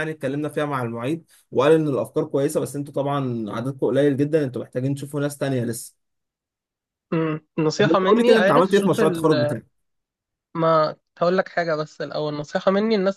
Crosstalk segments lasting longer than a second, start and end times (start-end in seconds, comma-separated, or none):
7.8-9.0